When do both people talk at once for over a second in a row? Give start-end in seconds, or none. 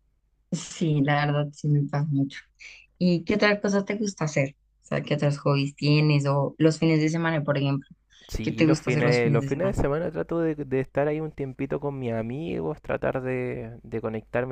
8.4-9.8